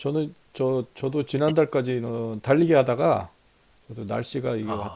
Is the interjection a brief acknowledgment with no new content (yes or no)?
yes